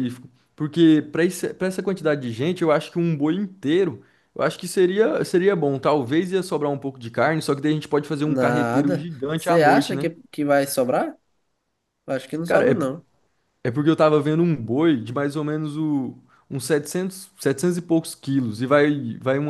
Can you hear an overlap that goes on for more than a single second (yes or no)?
yes